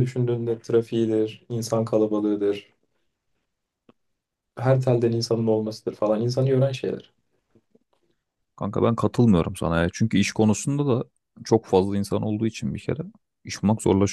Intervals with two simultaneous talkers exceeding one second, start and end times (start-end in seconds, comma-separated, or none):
none